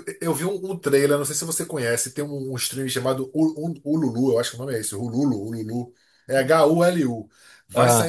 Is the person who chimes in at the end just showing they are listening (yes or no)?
yes